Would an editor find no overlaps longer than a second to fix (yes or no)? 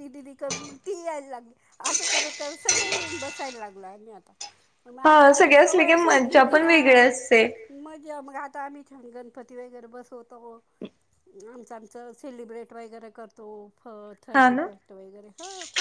no